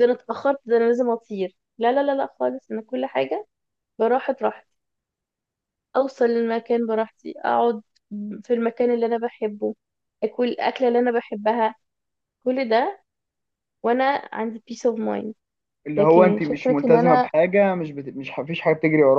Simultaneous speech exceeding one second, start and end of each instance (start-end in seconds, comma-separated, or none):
16.0-17.3